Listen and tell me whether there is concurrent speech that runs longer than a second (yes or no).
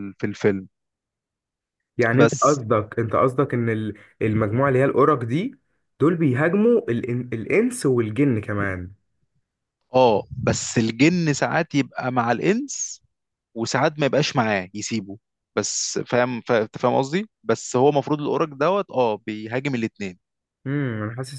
no